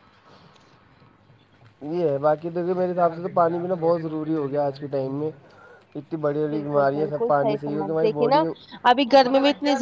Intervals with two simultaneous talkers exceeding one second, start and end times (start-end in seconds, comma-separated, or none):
6.5-8.4